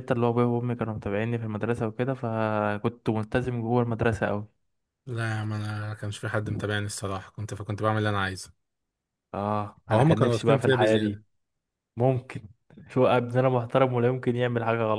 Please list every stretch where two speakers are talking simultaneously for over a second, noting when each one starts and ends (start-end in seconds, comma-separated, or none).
9.9-11.2